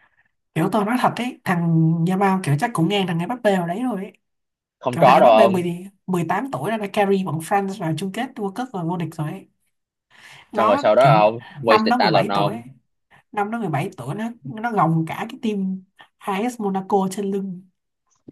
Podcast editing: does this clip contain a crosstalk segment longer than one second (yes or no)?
yes